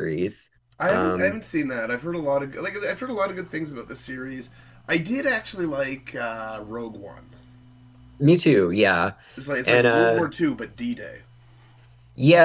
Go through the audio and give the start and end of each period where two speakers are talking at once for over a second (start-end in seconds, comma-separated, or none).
none